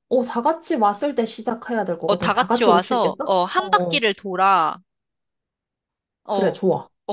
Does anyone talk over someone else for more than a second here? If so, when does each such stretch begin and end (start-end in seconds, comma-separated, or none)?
2.1-4.0